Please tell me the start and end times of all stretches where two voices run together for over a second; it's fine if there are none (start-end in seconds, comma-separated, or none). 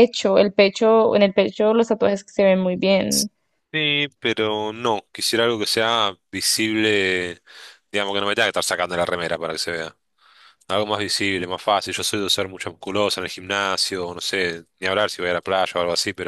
none